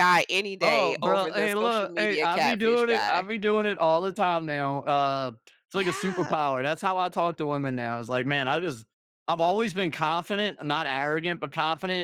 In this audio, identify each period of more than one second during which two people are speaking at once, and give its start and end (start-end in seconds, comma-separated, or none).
0.6-3.3